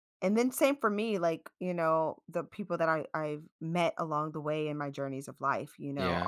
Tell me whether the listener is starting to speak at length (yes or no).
no